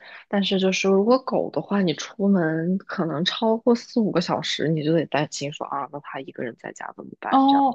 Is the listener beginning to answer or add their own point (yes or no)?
yes